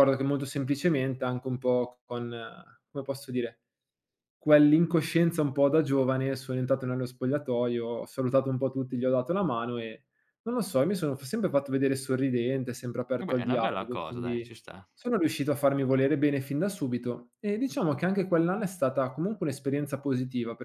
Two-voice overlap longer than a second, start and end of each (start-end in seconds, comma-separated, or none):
13.2-14.5